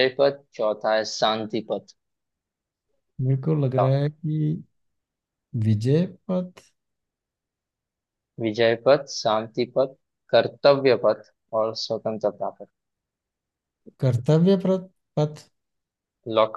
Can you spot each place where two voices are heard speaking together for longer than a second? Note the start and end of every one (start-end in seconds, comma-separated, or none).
none